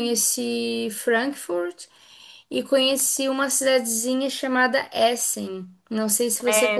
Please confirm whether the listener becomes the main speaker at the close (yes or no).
yes